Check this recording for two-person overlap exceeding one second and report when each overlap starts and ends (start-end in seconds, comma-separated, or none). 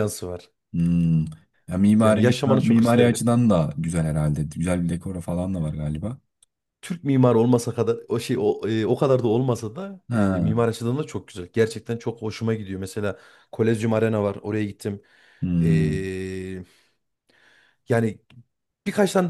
1.9-3.2